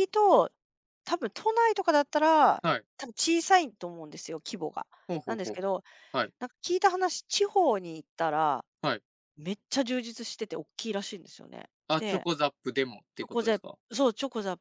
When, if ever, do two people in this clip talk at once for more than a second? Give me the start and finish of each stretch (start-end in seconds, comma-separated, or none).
none